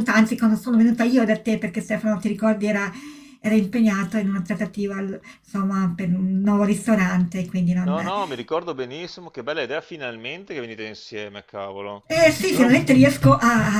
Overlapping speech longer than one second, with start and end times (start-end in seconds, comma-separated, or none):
none